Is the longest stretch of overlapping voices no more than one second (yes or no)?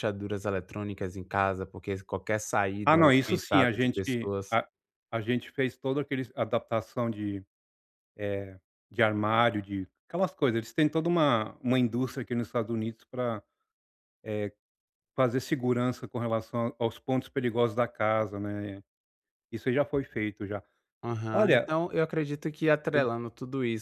no